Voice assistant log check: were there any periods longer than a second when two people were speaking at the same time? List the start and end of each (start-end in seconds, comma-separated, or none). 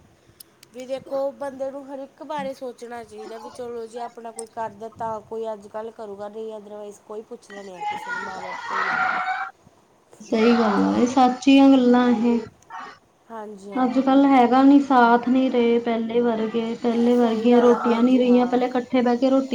17.2-18.6